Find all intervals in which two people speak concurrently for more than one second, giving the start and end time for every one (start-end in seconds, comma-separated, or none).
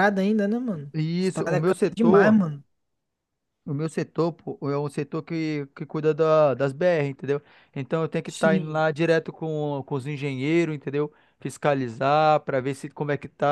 0.9-2.4